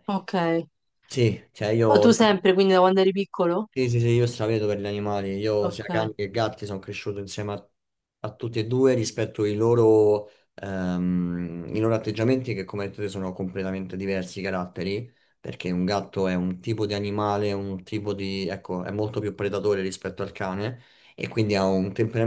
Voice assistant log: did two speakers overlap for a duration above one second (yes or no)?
no